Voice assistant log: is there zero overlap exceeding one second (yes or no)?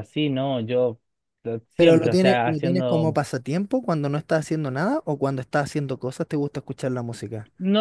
no